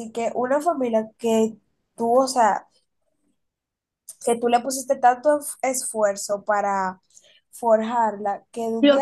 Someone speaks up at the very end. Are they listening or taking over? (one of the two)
taking over